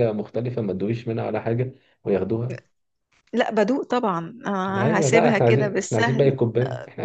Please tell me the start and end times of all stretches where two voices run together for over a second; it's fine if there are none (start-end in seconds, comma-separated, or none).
4.8-6.4